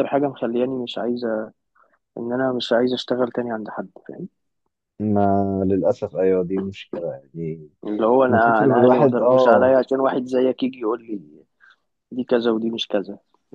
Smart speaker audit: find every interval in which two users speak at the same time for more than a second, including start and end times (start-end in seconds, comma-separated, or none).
8.3-9.7